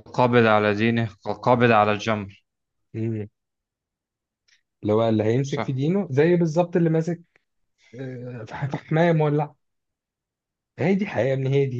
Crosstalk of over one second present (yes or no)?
no